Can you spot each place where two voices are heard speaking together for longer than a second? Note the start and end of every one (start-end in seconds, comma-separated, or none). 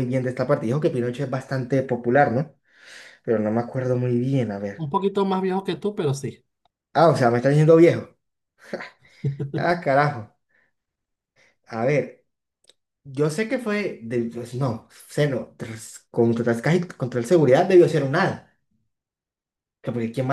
none